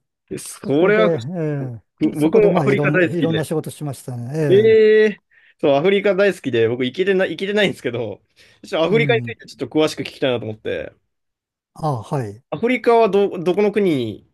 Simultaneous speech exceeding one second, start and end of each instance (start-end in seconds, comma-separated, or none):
2.2-3.4